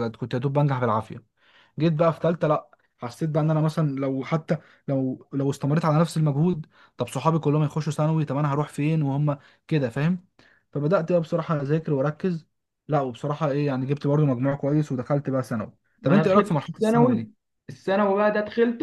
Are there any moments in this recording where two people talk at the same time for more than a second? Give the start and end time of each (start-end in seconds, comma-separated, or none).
16.0-17.3